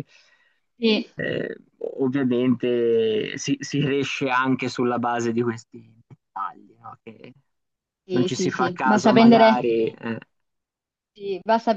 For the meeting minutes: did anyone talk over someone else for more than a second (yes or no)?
yes